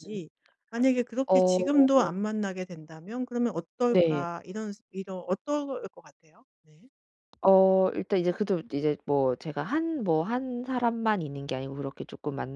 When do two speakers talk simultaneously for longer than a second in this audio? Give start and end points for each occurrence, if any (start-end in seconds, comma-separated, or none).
none